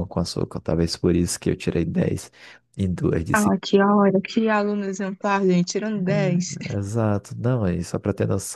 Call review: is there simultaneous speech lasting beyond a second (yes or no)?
no